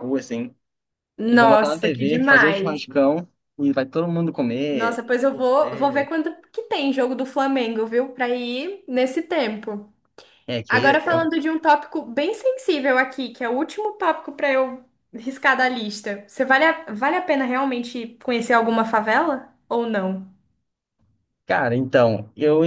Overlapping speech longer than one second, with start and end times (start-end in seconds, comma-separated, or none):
1.3-2.9, 4.7-6.1